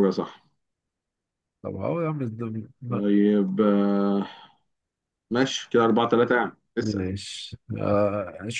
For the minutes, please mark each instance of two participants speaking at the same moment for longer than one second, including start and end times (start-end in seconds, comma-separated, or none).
none